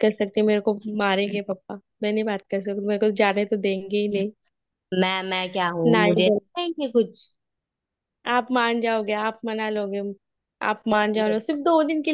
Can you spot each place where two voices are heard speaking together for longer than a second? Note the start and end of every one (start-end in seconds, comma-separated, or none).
none